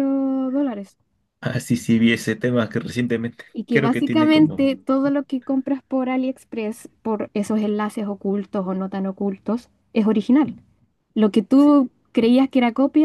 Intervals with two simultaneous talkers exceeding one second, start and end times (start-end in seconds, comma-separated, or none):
3.5-4.8